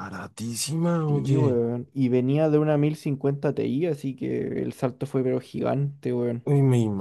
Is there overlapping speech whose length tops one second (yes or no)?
no